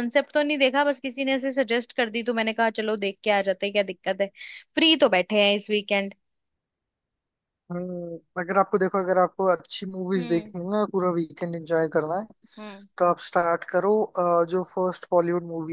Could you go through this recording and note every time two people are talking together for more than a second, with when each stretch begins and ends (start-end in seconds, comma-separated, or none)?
none